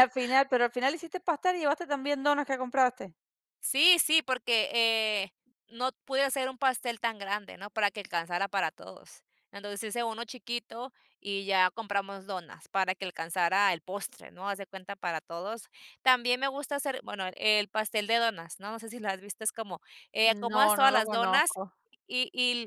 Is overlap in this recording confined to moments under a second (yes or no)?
no